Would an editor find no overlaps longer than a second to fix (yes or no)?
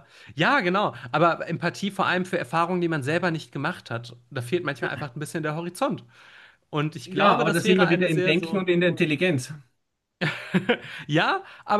no